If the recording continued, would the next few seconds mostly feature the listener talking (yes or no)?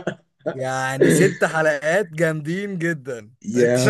yes